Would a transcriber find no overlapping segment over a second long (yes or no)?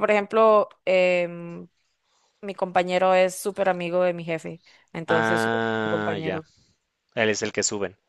no